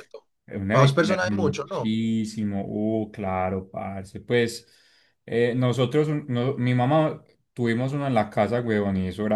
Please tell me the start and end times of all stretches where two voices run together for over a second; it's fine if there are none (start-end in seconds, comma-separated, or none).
0.7-1.9